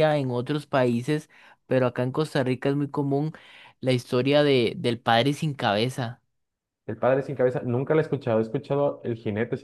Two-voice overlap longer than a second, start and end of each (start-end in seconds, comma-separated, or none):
none